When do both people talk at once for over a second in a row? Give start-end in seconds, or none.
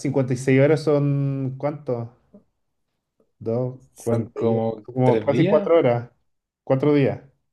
4.0-5.7